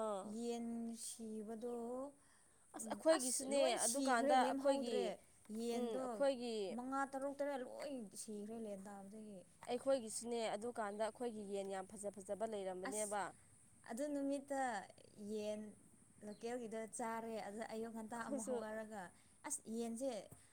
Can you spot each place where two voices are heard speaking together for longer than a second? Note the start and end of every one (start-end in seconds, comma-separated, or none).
2.9-5.0